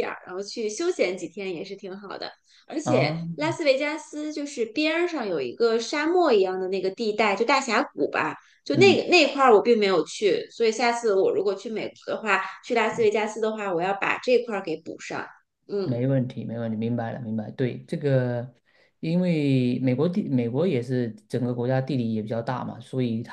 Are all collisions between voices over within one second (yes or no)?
yes